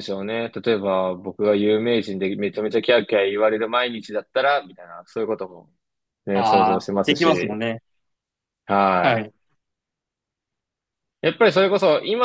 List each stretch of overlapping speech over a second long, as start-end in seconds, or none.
6.3-7.6